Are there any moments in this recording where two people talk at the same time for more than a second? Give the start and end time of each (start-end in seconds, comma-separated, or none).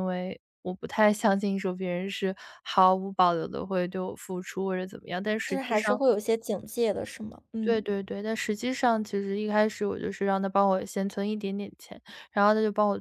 none